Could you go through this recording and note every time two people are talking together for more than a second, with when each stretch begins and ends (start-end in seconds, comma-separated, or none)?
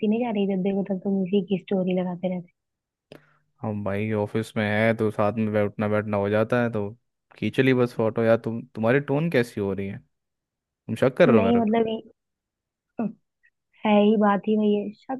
none